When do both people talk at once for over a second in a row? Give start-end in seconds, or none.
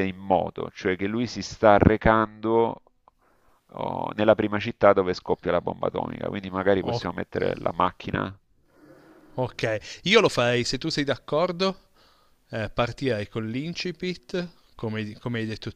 none